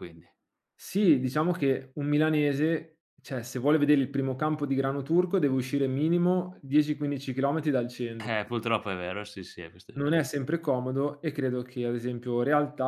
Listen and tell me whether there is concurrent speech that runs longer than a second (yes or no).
no